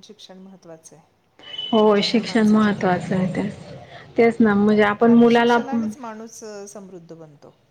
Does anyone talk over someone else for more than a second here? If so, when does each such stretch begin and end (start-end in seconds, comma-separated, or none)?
1.8-3.3